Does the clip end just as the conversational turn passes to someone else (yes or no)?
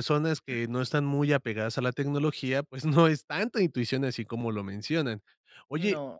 no